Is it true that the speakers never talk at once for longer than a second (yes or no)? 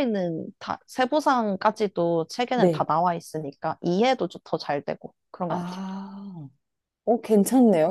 yes